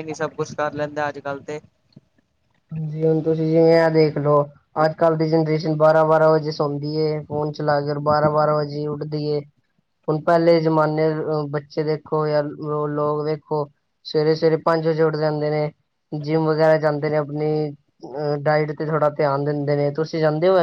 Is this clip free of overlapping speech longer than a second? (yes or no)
yes